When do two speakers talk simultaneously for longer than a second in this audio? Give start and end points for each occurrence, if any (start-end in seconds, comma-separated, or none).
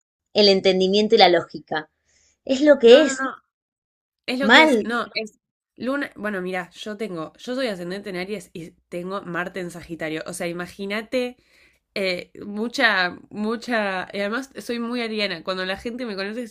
none